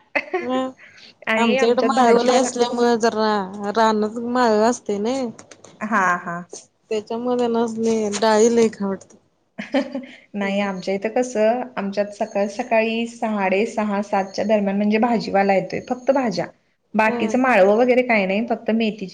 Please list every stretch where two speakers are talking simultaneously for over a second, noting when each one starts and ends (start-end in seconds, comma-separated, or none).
1.3-2.5